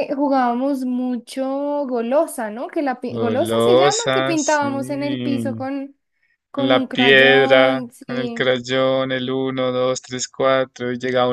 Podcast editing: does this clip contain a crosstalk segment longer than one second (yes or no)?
yes